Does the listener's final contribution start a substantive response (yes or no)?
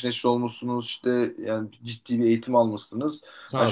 no